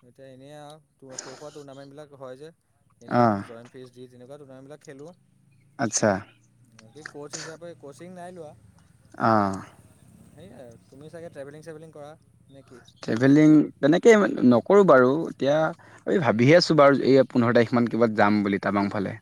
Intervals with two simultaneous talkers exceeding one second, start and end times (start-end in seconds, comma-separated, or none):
none